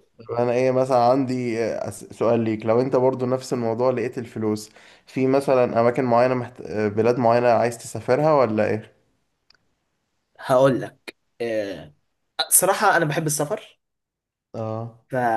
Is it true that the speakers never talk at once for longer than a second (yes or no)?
yes